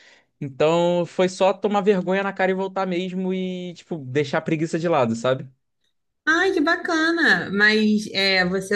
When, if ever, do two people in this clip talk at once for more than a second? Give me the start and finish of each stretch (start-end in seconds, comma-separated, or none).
none